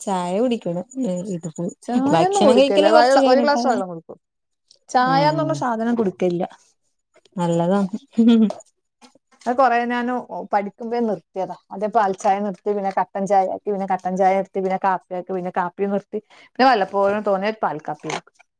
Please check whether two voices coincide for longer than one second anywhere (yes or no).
yes